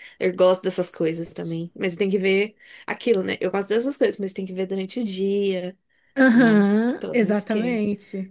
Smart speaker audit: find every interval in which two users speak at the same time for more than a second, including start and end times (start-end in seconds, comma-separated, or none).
6.3-7.8